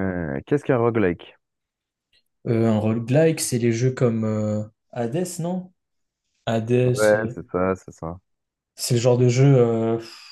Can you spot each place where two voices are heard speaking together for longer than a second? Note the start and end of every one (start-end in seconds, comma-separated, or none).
none